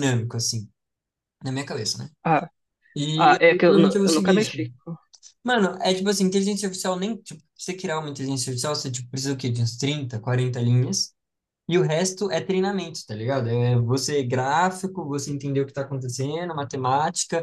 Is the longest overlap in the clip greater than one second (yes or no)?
yes